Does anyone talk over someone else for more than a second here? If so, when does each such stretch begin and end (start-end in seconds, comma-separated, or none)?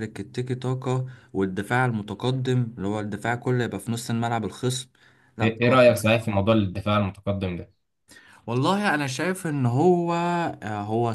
none